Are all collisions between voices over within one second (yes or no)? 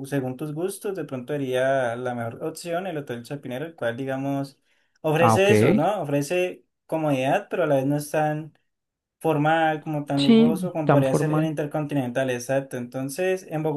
no